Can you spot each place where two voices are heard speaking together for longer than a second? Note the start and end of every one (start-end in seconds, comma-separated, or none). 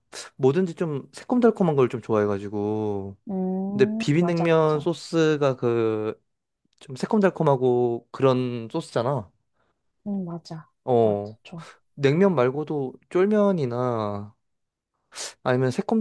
3.7-5.0